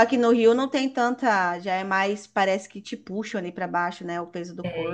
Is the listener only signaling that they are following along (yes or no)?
no